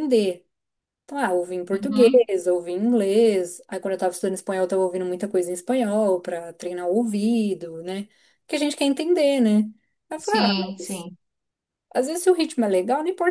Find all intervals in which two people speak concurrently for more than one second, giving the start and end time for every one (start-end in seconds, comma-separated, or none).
none